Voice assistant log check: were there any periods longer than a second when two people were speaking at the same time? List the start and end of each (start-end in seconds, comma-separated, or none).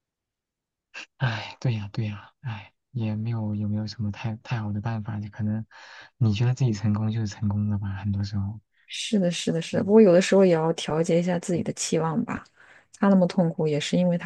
none